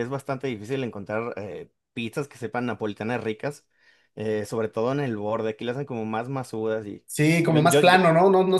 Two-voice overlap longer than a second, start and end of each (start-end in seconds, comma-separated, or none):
none